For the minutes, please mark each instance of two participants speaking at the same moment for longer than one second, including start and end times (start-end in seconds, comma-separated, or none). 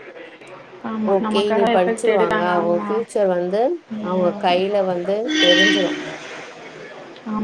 1.1-2.9